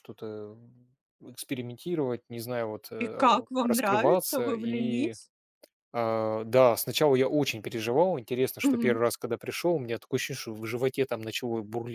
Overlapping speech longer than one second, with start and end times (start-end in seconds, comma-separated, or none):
3.0-5.2